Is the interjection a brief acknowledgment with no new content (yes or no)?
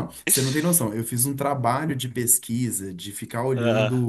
yes